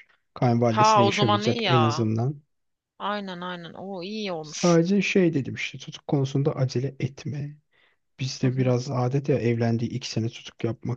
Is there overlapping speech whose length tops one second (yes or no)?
yes